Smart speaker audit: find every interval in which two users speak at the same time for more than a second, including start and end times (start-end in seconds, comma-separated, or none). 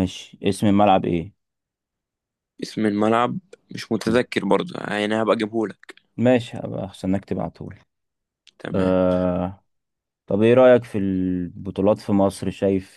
none